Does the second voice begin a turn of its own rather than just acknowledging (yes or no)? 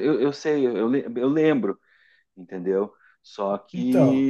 no